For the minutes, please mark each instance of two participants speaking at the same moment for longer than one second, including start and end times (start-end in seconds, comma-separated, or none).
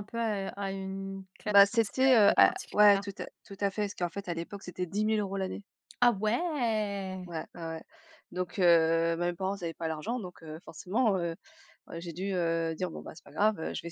1.5-3.0